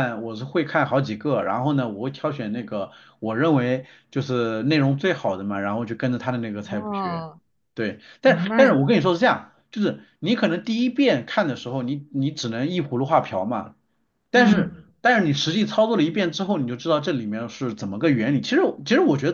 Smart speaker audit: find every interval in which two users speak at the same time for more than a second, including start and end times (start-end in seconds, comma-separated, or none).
none